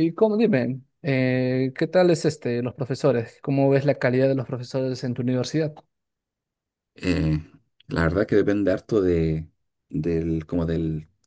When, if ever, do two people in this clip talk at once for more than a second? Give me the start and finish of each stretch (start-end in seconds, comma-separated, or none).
none